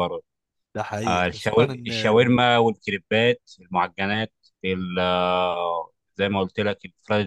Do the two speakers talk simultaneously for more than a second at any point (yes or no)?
yes